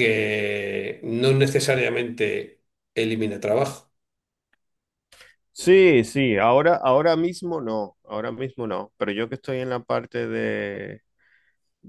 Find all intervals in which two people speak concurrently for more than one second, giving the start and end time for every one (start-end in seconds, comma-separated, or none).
none